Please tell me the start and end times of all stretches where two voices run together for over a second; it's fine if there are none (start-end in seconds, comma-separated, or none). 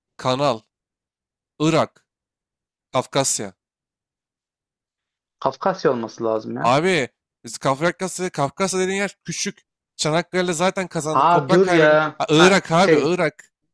11.1-13.2